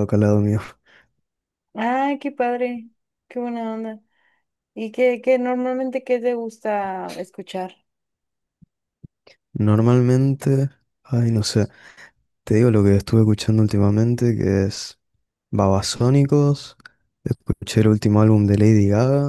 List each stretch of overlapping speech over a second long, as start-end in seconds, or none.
none